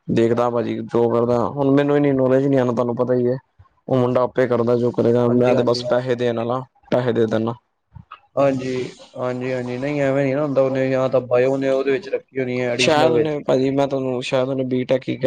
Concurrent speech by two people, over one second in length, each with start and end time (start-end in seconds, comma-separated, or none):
none